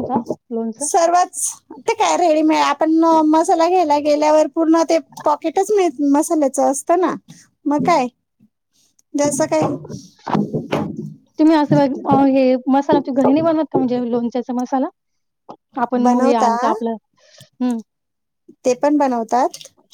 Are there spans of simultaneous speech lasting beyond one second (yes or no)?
no